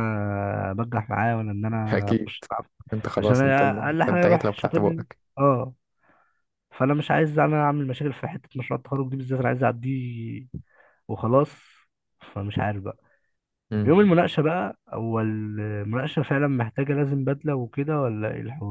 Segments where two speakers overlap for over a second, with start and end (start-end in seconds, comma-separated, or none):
3.2-5.2